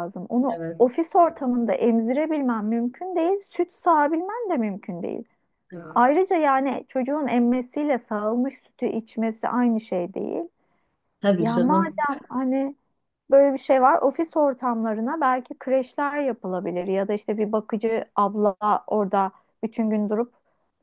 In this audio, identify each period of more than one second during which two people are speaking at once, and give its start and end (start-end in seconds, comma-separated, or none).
none